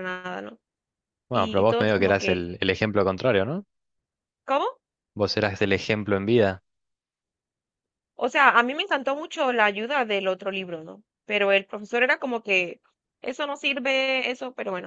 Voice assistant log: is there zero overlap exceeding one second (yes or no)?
no